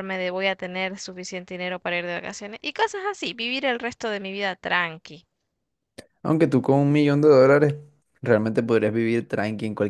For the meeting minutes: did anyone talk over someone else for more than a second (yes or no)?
no